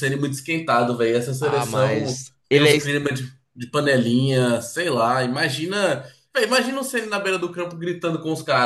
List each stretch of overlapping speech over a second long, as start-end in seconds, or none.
1.4-3.0